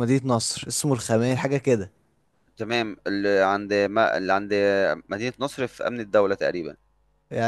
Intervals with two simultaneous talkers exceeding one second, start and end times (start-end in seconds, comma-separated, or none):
none